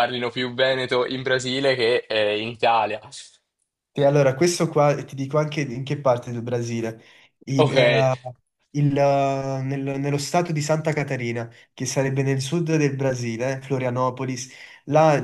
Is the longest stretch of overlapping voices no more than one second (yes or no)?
yes